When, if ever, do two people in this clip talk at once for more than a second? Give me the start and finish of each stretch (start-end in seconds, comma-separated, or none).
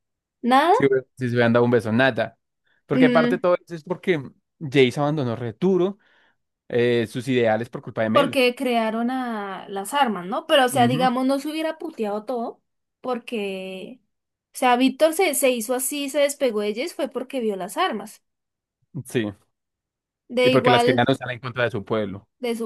none